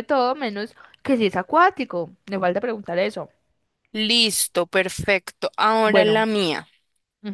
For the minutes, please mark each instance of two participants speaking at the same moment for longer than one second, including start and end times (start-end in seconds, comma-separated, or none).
none